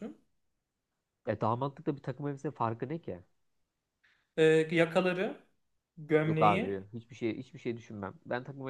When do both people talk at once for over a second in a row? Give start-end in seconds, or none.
none